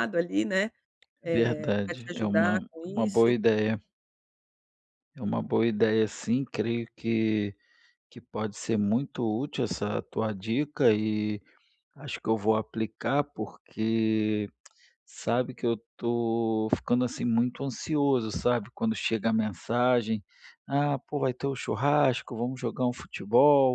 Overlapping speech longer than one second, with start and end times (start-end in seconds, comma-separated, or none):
1.2-3.4